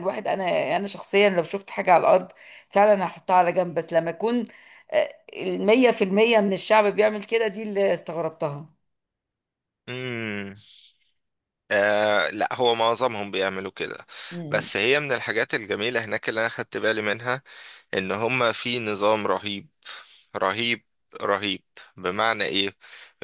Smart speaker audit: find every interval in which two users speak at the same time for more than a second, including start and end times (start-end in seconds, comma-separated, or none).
none